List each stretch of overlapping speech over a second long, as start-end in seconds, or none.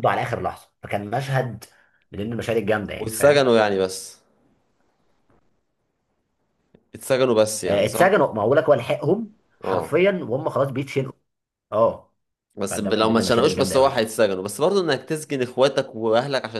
12.7-14.1